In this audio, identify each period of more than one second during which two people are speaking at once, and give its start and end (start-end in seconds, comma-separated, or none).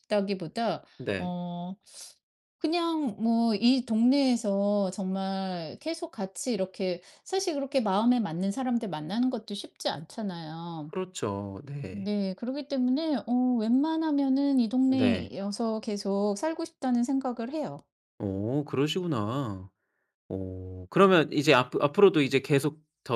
none